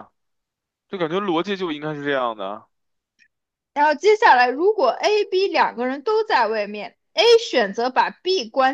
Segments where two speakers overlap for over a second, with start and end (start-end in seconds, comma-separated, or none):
none